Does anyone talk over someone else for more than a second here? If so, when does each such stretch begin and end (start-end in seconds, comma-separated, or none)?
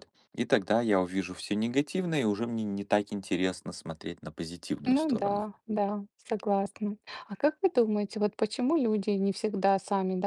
none